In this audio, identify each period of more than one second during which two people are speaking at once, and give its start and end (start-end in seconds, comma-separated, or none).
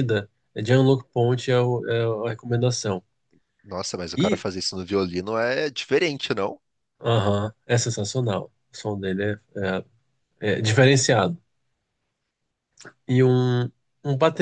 none